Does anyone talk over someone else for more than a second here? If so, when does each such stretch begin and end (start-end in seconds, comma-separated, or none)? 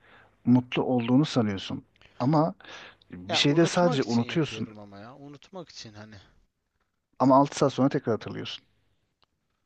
3.3-4.7